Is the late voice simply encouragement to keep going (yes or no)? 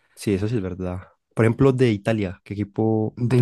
no